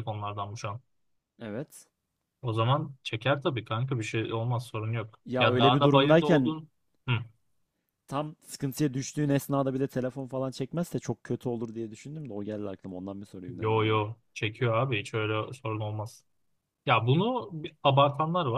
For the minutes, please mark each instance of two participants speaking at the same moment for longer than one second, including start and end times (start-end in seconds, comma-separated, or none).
5.2-6.5